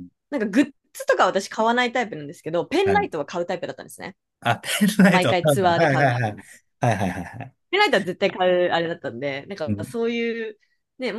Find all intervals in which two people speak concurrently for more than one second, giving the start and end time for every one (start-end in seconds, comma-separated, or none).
5.1-6.4